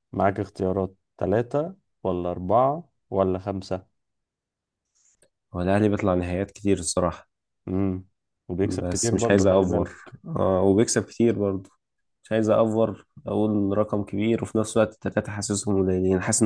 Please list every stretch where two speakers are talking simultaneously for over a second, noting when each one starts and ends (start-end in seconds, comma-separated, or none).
8.6-9.9